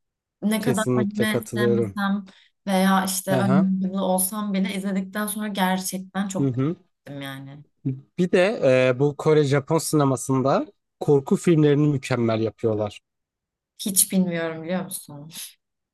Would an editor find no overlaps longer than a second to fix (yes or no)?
no